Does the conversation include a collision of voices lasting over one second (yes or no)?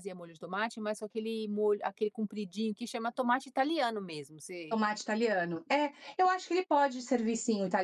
no